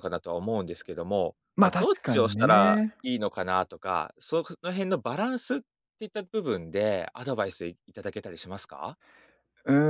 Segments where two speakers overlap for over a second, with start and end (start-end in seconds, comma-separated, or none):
1.6-3.0